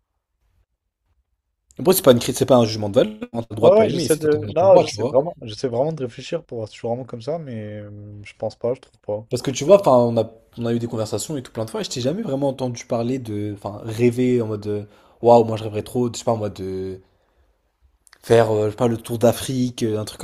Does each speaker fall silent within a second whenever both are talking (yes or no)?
no